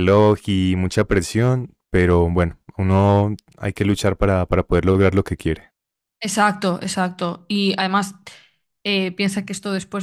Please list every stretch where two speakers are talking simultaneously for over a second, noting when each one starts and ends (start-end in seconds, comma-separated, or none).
none